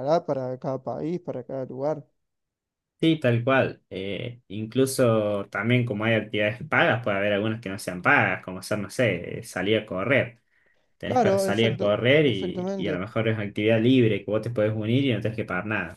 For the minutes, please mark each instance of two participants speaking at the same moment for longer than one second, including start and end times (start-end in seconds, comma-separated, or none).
11.1-13.0